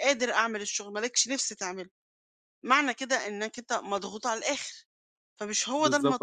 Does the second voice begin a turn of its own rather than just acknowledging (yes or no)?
yes